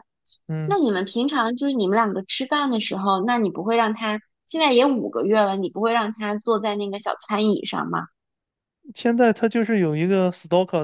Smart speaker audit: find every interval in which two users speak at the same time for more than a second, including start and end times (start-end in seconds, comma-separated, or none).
none